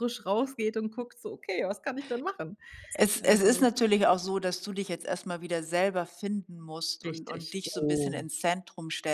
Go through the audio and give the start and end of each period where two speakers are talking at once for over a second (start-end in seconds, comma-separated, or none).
7.0-8.2